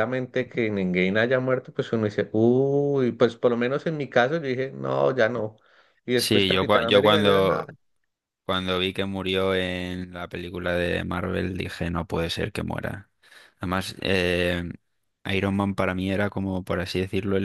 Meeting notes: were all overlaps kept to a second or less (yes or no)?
no